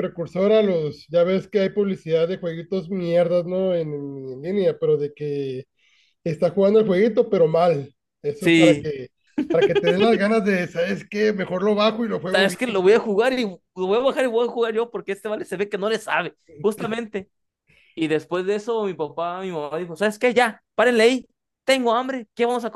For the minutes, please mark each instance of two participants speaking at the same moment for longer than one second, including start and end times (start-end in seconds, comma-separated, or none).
none